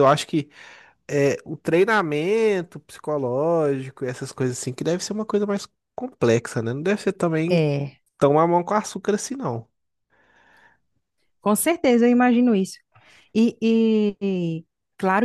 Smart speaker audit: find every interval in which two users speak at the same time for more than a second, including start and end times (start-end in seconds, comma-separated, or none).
none